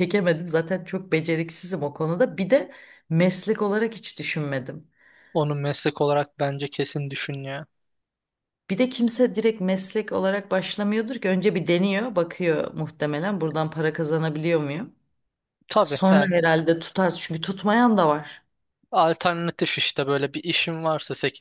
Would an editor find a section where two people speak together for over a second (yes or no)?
no